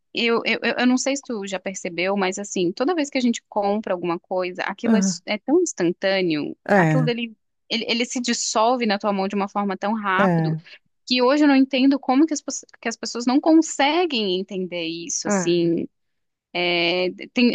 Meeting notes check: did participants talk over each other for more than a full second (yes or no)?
no